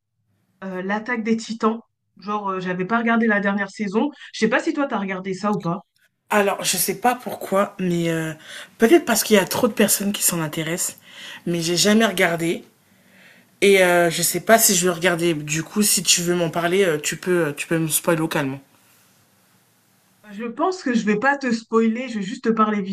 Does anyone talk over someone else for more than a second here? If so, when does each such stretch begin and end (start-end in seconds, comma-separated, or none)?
none